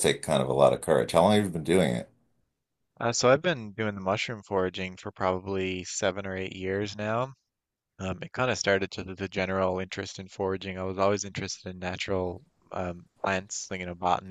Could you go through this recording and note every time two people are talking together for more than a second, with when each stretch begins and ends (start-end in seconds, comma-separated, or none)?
none